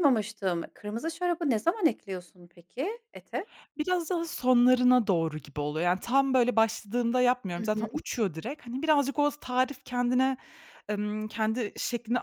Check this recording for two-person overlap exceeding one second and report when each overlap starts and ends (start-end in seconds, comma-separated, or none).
none